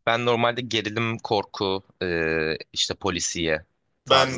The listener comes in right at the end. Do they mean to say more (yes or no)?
yes